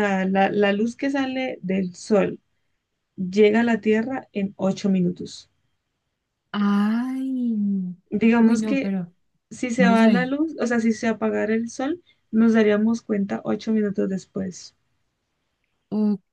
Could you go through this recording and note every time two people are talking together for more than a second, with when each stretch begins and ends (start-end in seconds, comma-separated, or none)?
none